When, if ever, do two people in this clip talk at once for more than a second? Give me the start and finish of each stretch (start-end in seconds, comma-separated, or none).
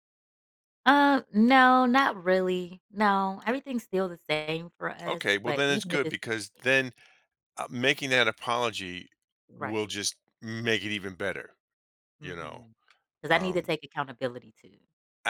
5.0-6.7